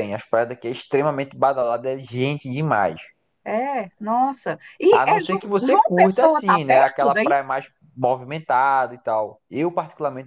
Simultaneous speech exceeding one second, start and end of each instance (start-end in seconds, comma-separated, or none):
4.9-7.3